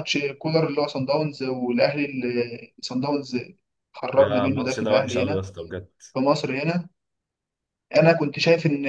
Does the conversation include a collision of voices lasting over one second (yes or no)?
yes